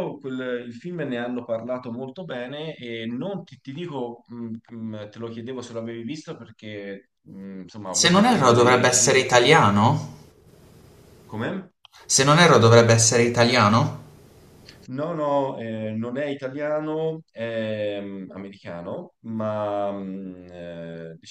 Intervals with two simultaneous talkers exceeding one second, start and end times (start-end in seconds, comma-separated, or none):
7.9-9.3